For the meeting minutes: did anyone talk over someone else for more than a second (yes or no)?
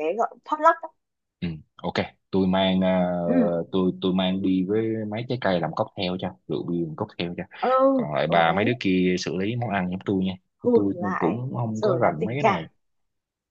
yes